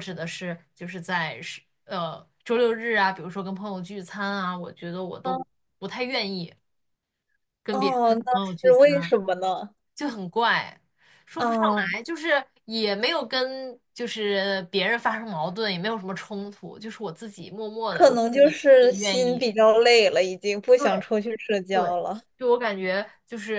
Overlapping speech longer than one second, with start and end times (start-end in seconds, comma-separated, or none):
7.7-9.1, 17.9-19.4